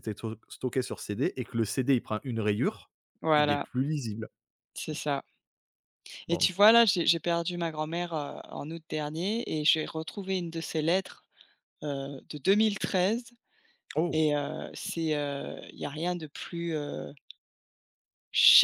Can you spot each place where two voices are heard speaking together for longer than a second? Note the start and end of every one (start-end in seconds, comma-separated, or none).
none